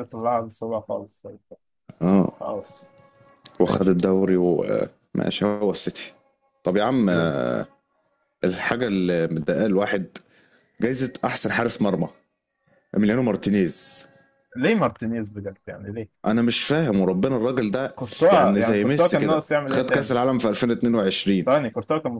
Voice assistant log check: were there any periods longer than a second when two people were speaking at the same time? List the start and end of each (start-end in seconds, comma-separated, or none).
18.3-20.1